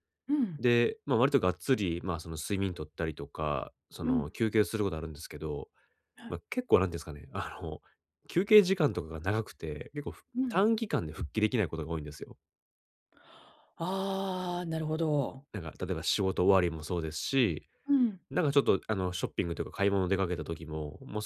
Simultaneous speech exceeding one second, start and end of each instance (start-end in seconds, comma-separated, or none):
none